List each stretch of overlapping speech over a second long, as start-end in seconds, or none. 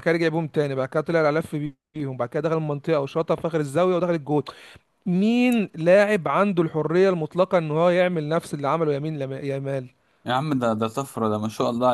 none